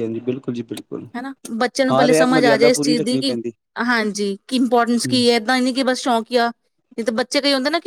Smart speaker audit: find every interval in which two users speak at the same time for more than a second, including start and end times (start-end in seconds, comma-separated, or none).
1.9-3.4